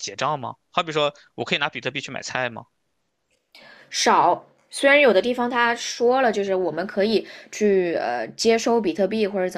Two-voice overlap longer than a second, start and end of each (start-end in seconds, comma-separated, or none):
none